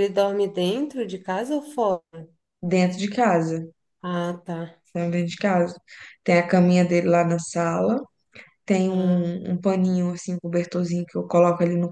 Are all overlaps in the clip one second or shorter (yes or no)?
yes